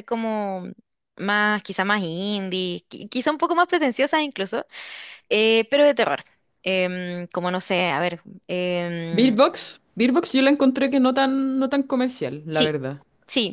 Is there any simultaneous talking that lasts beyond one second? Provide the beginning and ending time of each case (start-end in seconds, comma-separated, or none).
none